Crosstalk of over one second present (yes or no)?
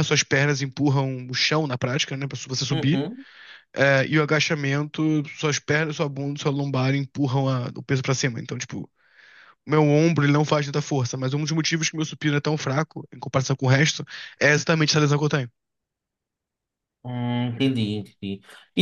no